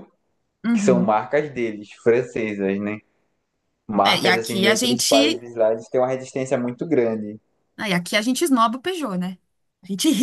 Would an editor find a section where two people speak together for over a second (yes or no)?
yes